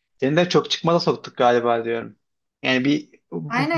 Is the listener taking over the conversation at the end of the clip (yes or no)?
yes